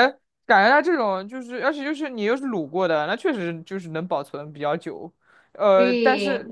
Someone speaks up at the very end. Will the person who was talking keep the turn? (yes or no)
yes